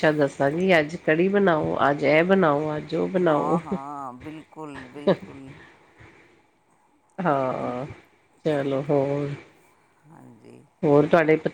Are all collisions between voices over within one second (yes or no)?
yes